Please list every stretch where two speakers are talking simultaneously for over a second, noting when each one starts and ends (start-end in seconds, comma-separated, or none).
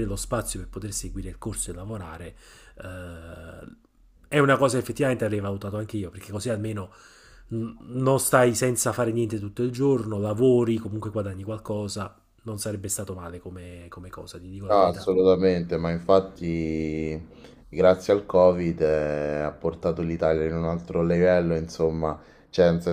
none